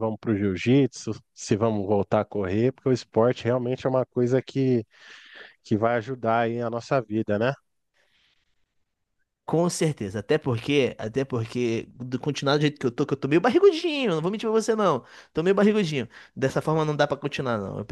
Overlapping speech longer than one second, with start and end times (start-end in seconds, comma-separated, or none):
none